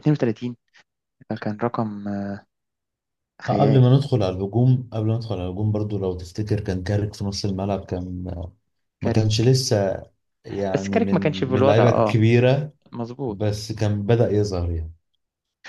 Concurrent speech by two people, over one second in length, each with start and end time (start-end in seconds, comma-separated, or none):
10.7-12.2